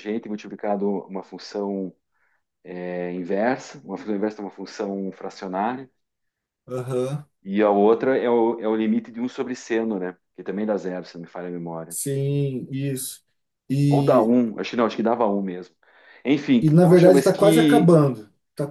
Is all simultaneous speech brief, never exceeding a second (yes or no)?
no